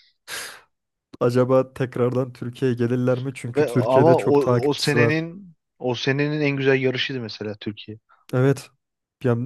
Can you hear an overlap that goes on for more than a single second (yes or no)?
yes